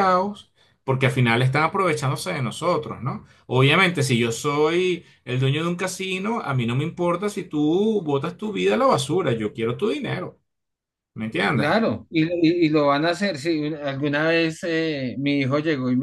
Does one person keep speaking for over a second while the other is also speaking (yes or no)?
no